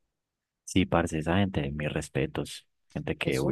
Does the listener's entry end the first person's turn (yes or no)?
yes